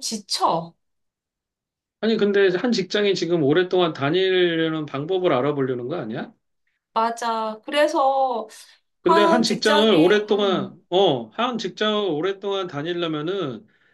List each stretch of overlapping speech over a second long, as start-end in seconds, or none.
9.0-10.8